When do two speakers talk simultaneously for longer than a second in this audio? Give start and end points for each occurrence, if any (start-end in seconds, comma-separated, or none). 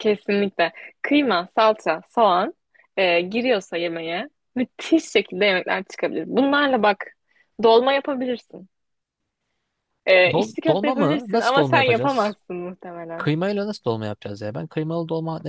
10.3-12.4